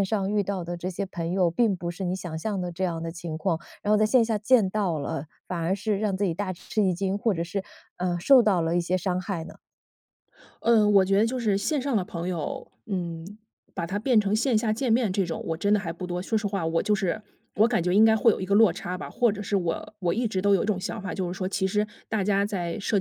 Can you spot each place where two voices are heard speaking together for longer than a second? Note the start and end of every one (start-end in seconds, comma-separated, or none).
none